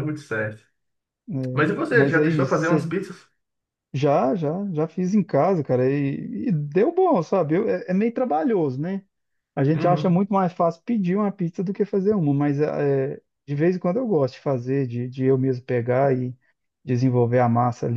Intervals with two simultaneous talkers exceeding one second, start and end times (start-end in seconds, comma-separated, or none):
1.5-2.8